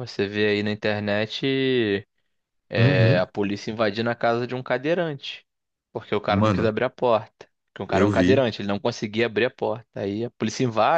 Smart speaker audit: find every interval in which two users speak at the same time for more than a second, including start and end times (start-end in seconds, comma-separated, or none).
none